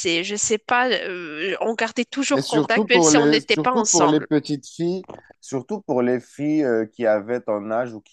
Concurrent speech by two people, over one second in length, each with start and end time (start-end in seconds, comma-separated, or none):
2.3-4.3